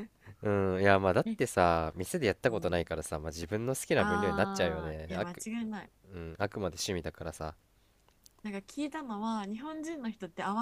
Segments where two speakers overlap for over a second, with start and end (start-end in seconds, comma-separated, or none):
3.9-5.5